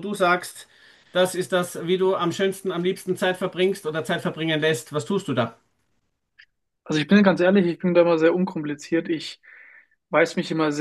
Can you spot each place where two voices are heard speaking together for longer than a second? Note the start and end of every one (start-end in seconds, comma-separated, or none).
none